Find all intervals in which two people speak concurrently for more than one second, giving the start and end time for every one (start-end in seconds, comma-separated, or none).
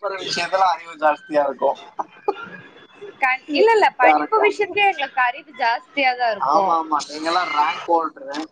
none